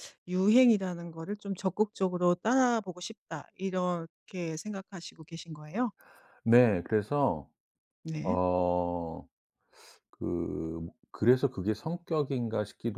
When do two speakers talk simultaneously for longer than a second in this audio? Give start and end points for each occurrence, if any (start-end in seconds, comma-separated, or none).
none